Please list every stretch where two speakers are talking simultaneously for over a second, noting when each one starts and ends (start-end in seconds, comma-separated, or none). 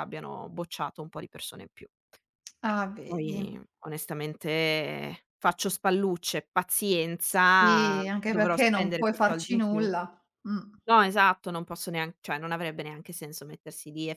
7.6-9.9